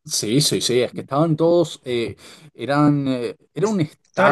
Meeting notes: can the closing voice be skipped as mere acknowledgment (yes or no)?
yes